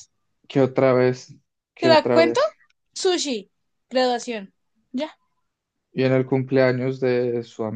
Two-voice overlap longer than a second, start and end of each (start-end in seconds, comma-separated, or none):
none